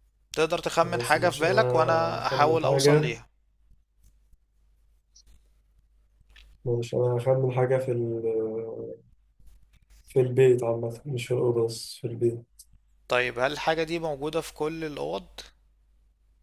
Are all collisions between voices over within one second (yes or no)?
no